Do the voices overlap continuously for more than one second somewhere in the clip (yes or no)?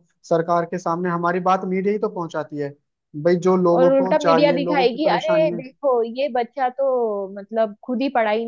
yes